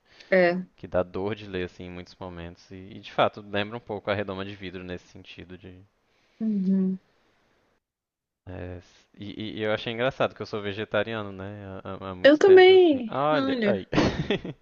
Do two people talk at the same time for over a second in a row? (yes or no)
yes